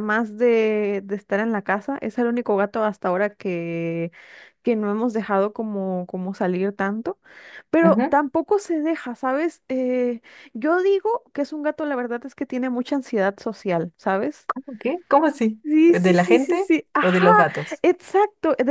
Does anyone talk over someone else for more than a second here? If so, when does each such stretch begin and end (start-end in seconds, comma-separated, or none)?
15.6-17.2